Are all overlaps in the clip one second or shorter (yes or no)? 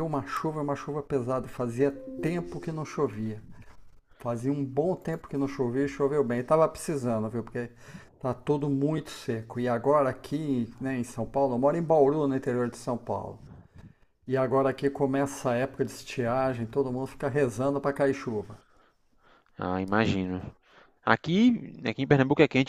yes